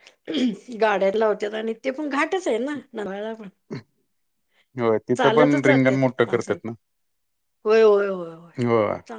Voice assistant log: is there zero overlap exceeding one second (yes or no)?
no